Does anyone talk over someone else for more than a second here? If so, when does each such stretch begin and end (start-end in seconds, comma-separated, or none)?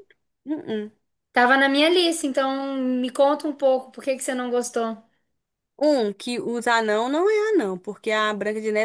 none